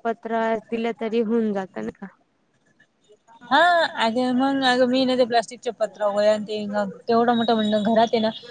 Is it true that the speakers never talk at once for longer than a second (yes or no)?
yes